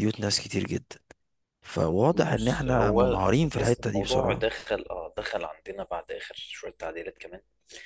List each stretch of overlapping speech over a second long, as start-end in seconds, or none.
2.3-4.5